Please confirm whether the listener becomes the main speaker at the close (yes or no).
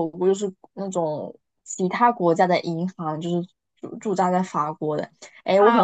yes